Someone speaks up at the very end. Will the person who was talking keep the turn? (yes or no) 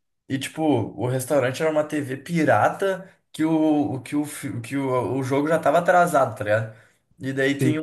yes